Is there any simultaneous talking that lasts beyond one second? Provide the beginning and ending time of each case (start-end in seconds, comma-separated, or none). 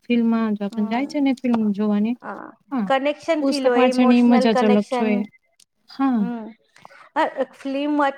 3.4-5.1